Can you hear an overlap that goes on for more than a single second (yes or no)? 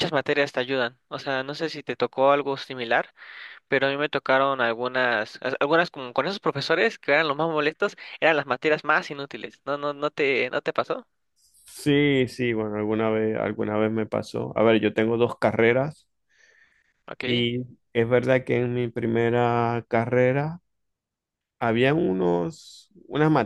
no